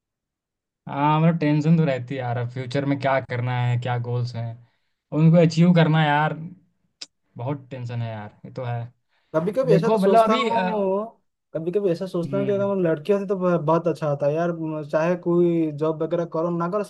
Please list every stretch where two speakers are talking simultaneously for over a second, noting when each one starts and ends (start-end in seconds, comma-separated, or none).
9.7-11.0